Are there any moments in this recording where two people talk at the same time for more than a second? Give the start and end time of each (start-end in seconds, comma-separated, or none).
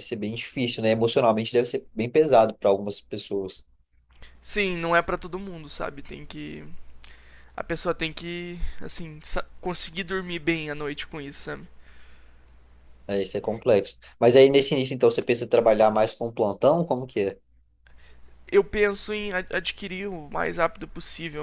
none